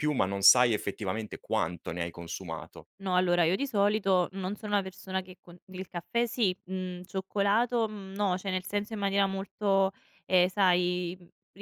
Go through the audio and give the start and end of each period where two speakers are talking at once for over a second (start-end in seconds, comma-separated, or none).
none